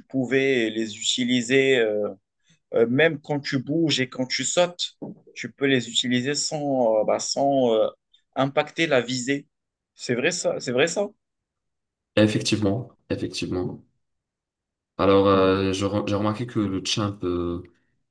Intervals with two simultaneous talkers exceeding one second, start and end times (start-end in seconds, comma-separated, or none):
none